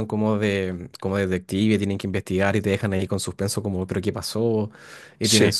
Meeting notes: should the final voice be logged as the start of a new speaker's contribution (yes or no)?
no